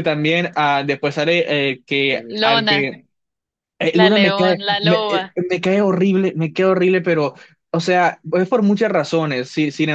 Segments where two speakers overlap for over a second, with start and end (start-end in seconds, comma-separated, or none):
3.9-5.4